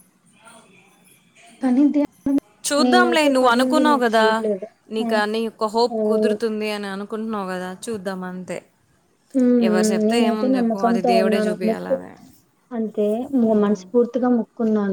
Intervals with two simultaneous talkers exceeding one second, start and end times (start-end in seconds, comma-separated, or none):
10.1-12.0